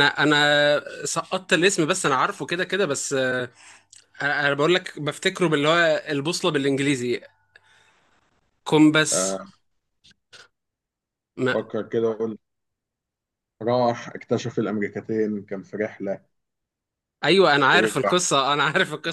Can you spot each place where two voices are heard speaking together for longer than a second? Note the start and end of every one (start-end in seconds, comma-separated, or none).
none